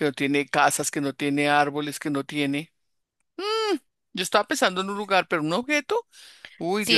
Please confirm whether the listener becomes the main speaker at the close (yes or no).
yes